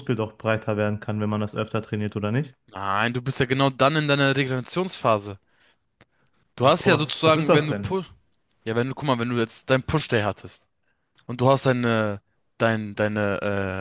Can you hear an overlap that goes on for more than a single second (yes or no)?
yes